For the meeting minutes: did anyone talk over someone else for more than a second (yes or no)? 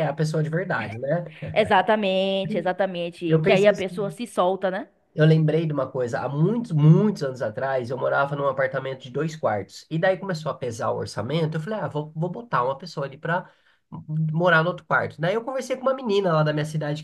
no